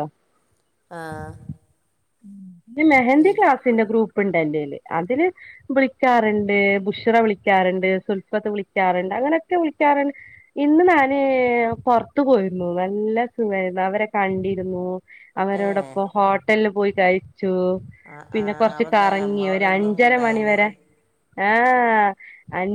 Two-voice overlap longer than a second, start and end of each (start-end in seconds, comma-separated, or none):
none